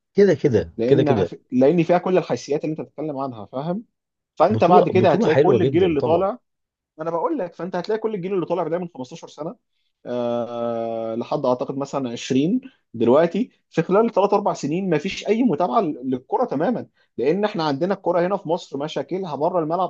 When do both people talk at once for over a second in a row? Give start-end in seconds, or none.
4.5-6.3